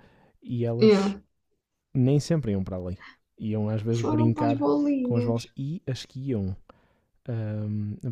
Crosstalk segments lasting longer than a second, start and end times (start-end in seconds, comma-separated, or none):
3.9-5.4